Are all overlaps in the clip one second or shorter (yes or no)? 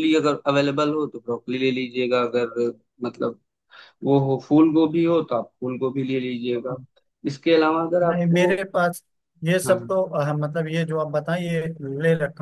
yes